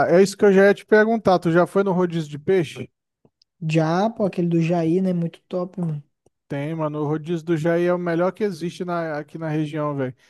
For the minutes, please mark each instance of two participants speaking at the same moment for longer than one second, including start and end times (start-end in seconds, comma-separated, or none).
none